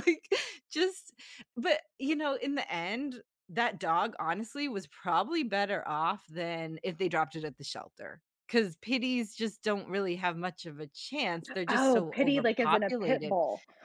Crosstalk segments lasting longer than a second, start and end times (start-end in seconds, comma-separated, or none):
11.7-13.3